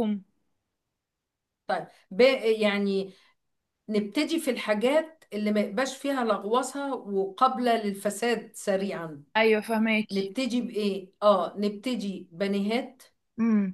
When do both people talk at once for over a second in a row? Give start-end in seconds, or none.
none